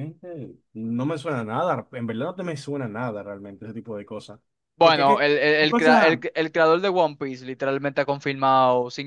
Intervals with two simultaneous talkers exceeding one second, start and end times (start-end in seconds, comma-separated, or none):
4.8-6.2